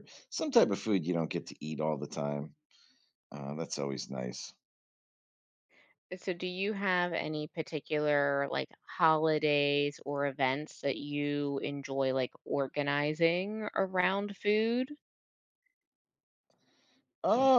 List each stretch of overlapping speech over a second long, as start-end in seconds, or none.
none